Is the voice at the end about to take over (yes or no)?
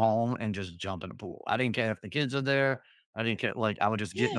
yes